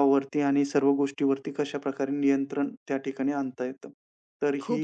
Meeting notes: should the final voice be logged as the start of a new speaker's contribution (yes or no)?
yes